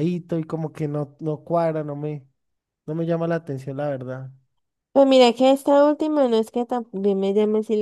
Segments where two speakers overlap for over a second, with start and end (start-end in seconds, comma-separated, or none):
none